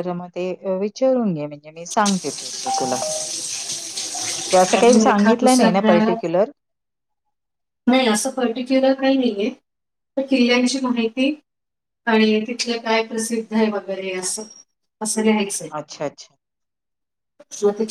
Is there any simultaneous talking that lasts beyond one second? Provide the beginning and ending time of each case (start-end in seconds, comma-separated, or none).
4.8-6.1